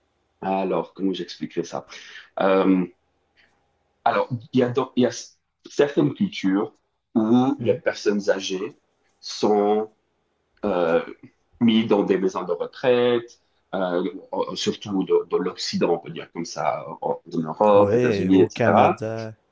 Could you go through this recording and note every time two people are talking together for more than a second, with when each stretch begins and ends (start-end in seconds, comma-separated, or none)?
17.7-19.0